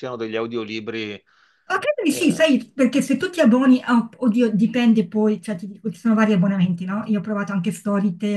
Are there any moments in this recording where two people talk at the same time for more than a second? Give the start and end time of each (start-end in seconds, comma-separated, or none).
none